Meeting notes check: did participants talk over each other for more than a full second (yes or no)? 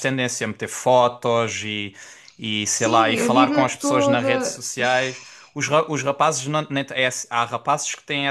yes